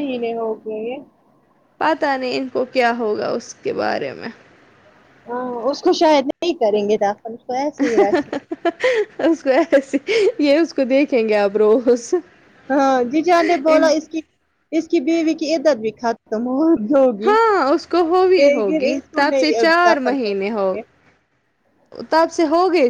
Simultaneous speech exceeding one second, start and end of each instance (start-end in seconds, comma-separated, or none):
18.4-20.7